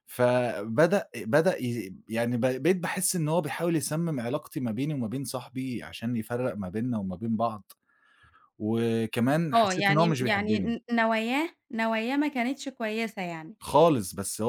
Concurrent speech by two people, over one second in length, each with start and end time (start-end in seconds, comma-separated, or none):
9.5-10.8